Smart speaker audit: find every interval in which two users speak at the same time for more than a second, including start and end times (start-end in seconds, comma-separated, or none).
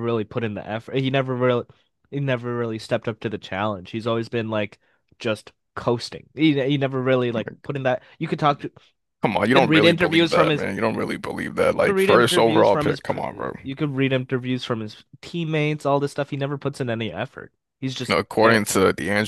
9.4-10.7, 11.7-13.2